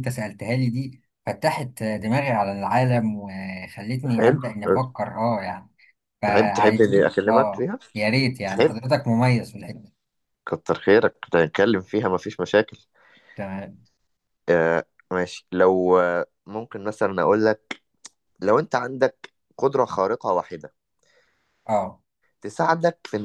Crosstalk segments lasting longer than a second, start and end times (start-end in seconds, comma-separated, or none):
6.2-7.8